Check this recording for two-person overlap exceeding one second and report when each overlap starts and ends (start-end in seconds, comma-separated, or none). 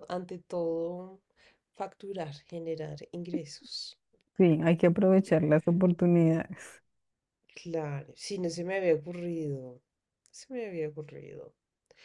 none